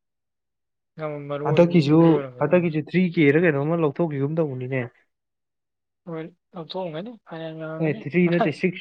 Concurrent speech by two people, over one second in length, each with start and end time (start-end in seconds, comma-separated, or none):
1.4-2.8